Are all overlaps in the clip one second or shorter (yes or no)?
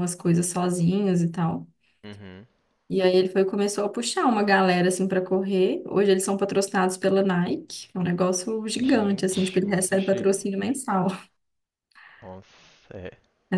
no